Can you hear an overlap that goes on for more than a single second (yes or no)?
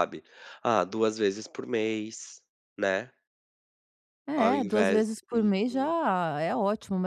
yes